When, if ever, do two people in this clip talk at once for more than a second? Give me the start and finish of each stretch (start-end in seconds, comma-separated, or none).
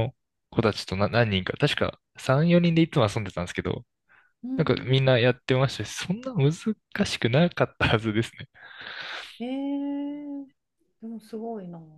none